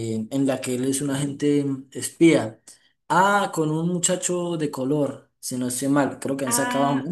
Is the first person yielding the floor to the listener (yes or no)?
yes